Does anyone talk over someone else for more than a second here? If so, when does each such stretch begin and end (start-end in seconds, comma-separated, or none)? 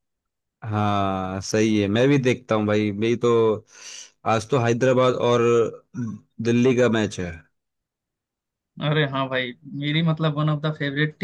none